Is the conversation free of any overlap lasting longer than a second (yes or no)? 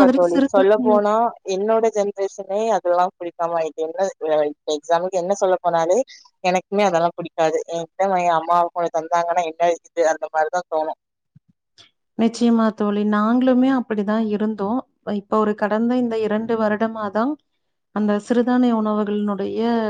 yes